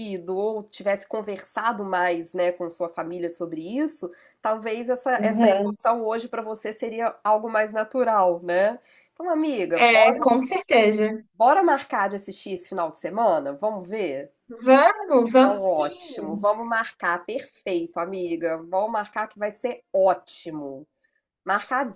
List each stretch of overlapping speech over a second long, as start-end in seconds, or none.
15.2-16.5